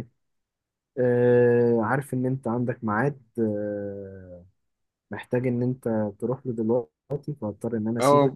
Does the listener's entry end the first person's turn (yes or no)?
yes